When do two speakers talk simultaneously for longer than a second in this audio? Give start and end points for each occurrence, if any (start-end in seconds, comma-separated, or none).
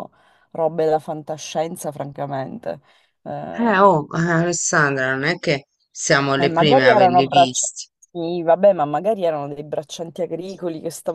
6.3-7.7